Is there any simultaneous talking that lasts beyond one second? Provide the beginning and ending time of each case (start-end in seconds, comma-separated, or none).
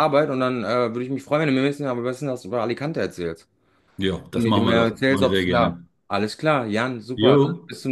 4.3-5.9